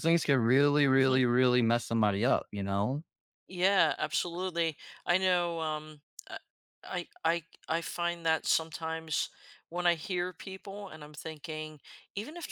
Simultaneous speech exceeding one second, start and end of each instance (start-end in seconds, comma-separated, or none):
none